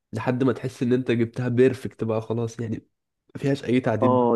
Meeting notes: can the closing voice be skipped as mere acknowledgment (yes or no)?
no